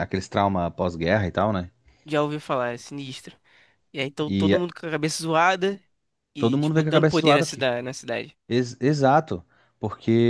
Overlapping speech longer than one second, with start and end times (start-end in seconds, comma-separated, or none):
6.4-7.7